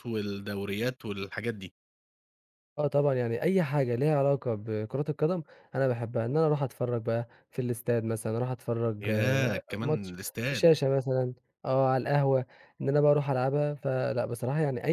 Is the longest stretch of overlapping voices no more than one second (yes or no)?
no